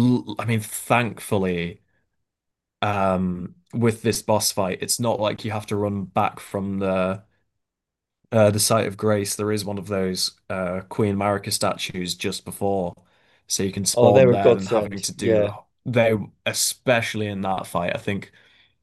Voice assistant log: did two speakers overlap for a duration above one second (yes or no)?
yes